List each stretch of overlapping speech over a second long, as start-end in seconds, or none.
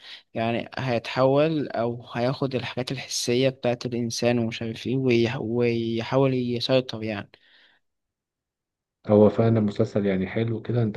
none